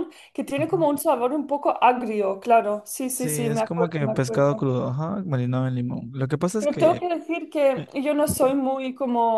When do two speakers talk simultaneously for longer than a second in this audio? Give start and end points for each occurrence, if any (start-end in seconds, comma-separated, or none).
3.1-4.7